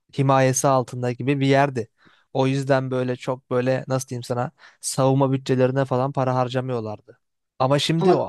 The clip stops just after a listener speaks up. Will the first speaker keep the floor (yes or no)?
yes